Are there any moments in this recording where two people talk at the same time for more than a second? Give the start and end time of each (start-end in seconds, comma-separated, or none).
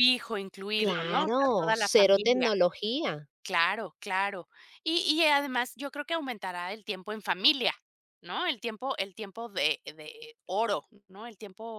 0.8-2.5